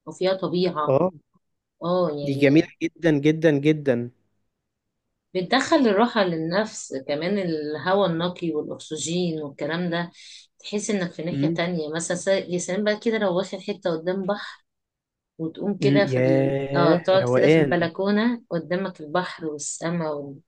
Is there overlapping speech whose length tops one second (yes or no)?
yes